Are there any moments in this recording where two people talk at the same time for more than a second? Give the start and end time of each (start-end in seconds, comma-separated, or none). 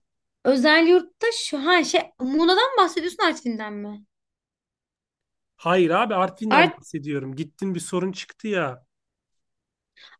none